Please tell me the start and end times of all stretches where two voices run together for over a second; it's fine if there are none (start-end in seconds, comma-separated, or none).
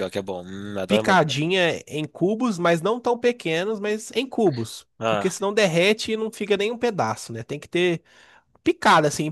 none